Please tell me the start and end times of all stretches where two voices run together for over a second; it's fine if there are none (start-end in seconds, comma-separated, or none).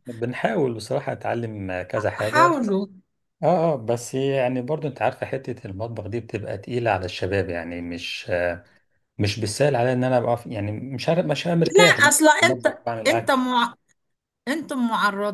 11.6-13.3